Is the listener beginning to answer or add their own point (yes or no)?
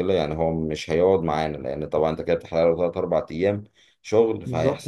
no